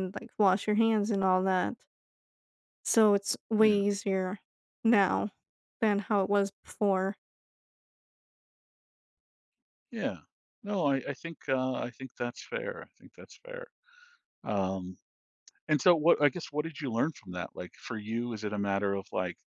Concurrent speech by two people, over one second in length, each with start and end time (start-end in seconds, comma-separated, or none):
none